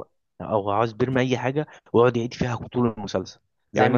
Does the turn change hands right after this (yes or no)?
no